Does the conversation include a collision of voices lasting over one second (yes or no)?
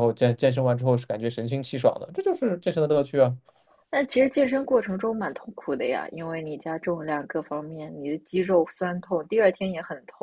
no